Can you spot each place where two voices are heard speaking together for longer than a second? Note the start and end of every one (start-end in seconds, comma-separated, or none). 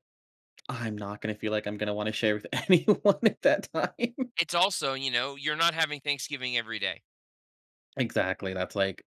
none